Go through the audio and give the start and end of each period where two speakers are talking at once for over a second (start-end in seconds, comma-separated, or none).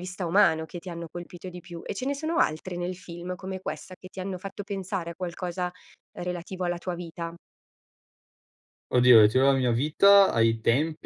none